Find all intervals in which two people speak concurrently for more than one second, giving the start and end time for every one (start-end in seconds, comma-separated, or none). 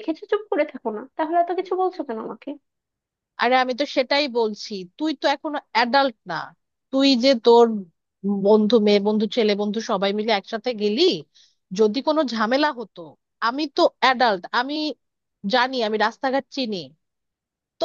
none